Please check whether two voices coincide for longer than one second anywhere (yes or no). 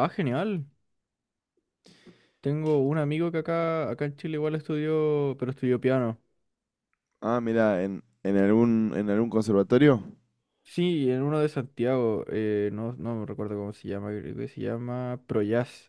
no